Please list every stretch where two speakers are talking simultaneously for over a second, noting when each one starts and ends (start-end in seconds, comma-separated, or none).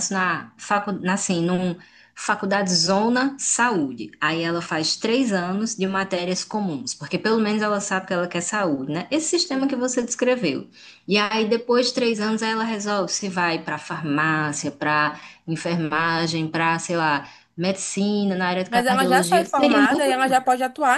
18.7-20.4